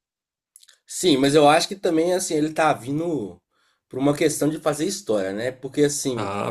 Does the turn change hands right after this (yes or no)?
no